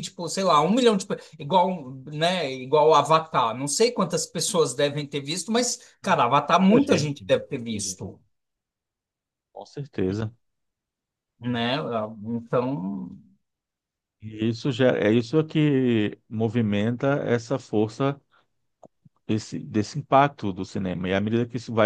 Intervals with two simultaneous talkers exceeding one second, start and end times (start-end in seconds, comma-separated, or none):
6.0-8.0